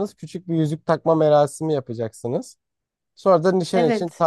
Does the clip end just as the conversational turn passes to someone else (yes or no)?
no